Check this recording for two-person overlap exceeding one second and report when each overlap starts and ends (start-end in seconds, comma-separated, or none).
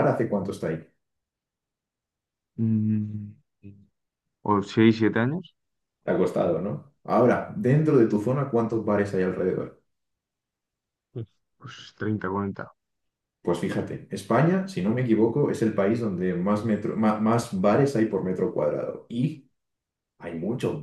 none